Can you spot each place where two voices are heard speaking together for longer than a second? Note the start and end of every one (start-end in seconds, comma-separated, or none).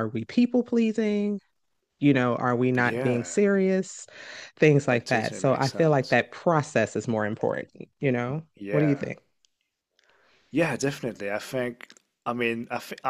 4.9-6.2